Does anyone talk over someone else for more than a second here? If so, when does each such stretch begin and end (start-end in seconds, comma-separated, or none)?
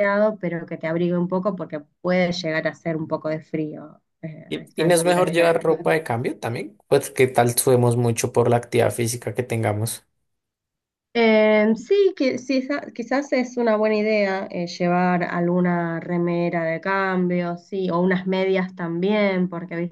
4.5-5.9